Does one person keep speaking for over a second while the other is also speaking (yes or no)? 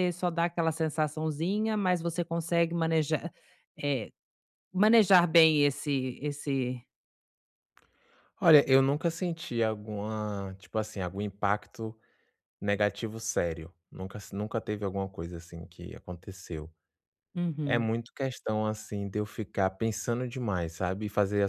no